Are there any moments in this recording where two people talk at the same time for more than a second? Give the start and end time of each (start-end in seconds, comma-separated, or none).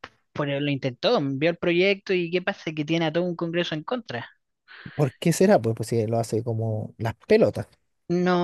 none